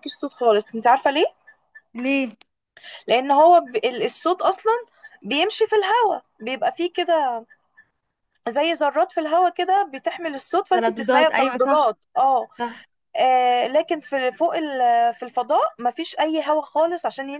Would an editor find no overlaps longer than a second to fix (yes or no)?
no